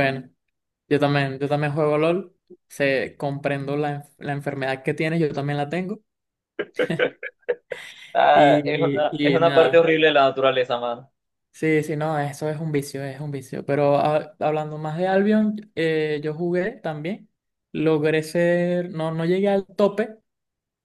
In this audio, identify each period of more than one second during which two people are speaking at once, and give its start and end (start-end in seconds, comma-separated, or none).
8.3-9.9